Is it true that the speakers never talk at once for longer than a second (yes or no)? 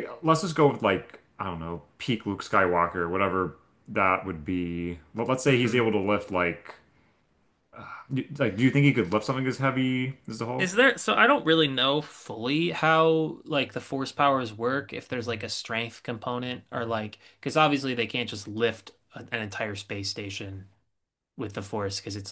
yes